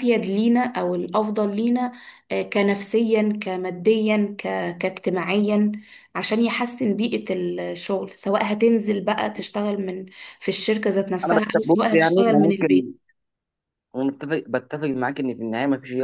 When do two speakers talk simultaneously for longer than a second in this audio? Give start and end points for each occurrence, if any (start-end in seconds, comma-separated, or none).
11.3-12.9